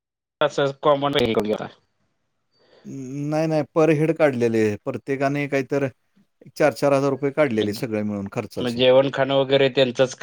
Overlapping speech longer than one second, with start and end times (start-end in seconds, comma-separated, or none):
none